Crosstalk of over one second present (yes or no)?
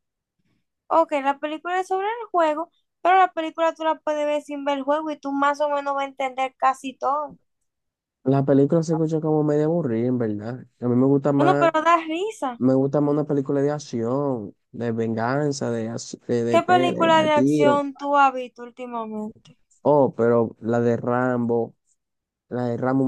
yes